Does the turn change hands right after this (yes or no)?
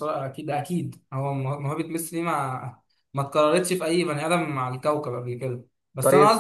no